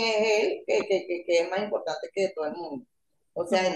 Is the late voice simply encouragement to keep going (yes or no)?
yes